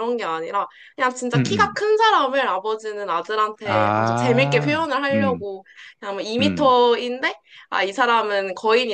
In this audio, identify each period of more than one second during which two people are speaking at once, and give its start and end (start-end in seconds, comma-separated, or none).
3.6-5.4